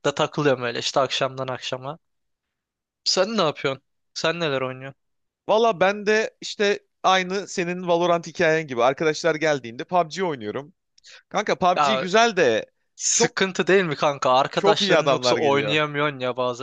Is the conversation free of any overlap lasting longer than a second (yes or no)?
no